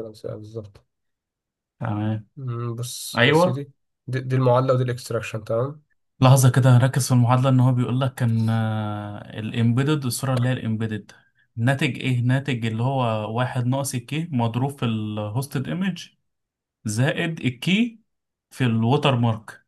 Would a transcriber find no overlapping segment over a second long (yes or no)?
yes